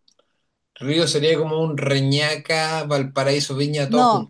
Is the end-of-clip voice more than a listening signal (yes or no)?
yes